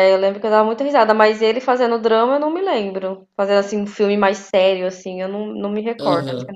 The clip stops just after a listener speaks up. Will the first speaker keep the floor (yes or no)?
no